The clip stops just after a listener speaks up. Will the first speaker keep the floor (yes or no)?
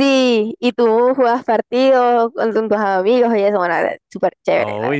no